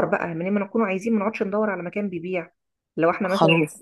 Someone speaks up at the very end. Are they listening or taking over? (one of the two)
taking over